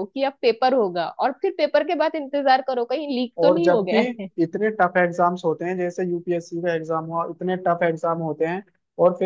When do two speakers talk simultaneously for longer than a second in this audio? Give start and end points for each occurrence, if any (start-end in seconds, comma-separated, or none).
none